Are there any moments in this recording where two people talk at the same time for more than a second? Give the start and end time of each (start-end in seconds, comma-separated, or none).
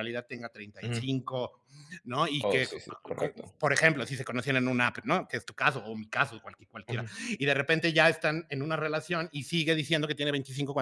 none